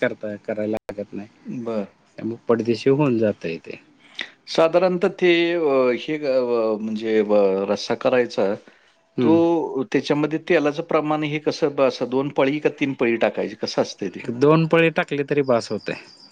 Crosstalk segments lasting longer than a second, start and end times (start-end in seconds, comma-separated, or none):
none